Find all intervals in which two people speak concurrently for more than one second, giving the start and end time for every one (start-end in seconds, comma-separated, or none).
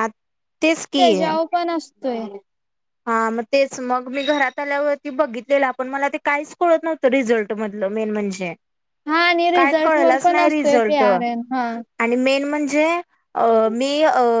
9.6-11.0